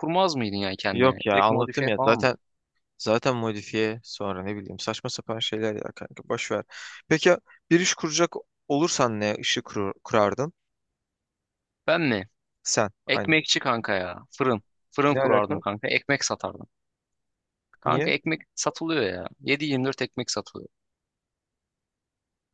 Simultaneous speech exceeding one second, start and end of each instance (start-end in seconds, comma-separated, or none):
0.9-2.3